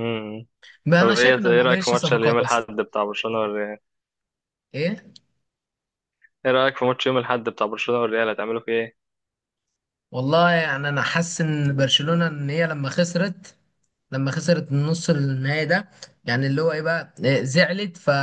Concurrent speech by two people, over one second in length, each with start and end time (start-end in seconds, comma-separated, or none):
1.0-2.7